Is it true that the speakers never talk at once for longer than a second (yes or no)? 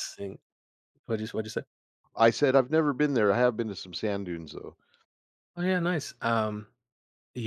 yes